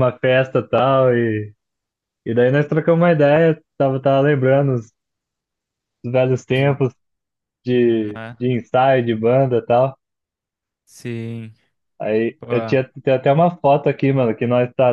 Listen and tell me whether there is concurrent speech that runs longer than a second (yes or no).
no